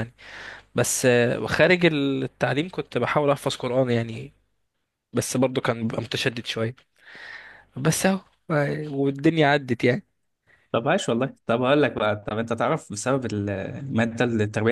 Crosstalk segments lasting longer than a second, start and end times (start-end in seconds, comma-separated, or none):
none